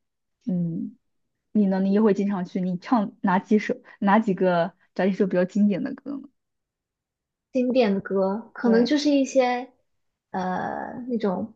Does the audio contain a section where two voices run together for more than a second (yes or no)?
no